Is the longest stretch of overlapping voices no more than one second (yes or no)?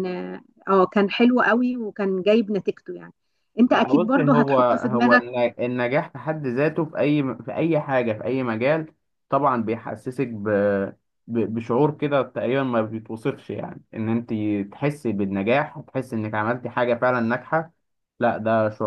no